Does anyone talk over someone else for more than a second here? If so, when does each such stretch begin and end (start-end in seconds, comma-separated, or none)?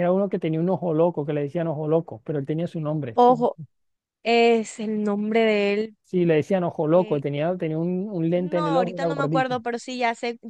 8.3-9.6